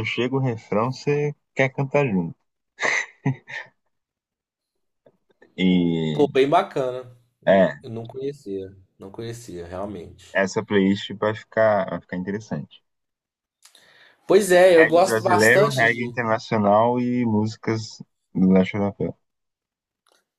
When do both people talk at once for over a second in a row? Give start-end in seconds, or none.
14.8-16.1